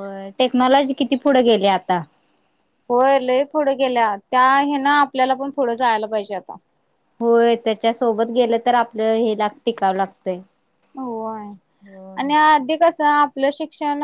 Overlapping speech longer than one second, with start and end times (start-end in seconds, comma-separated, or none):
none